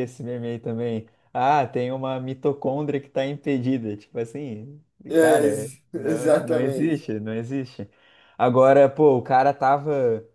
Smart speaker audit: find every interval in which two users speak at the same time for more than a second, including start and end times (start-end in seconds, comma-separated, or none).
5.2-7.1